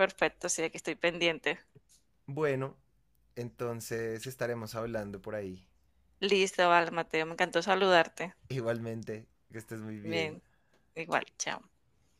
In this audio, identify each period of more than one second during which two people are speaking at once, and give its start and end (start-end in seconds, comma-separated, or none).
none